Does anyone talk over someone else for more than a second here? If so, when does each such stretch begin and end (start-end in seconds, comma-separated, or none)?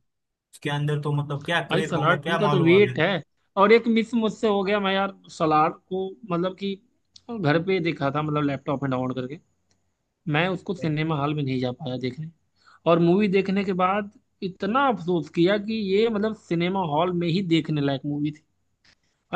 1.7-2.9